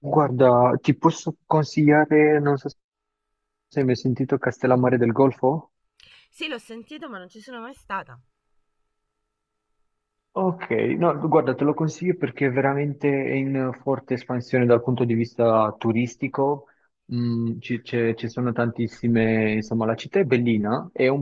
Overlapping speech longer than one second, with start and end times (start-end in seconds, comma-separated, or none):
none